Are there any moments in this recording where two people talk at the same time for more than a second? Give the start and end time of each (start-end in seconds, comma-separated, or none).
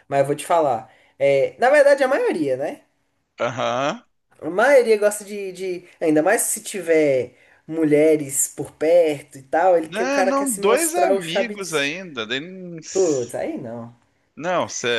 9.9-11.6